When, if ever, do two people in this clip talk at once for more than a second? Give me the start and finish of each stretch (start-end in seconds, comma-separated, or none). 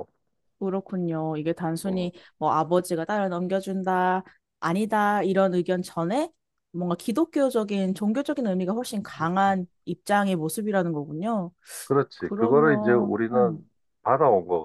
12.2-13.7